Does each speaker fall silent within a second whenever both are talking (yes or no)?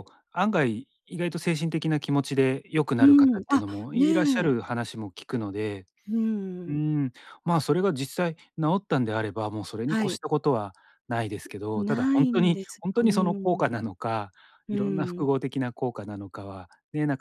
no